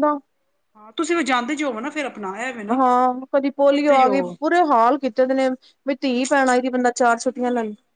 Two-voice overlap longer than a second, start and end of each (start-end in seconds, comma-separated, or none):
none